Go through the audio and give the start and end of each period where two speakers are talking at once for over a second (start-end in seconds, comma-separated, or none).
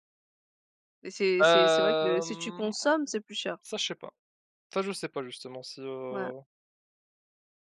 1.4-2.7